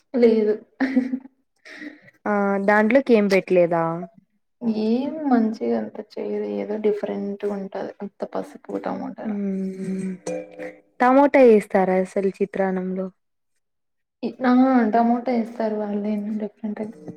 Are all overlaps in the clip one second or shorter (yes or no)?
yes